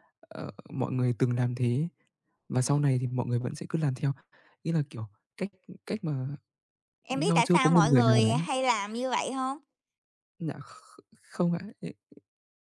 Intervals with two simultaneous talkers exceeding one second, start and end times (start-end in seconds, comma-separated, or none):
7.1-8.4